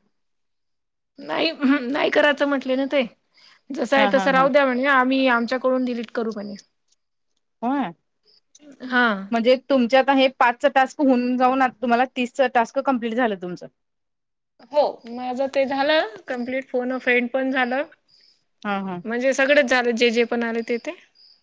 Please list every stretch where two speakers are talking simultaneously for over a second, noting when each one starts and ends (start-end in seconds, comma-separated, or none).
none